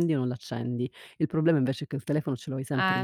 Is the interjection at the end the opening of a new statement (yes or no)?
no